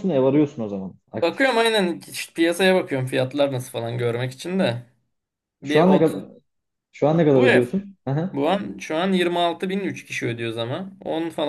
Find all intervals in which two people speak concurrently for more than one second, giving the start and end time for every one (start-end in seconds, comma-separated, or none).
none